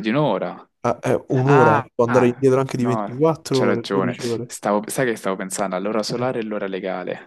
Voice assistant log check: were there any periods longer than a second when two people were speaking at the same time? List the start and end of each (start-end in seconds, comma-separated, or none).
1.4-4.5